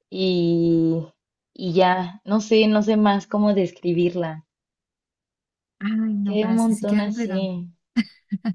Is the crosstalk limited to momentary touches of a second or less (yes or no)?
no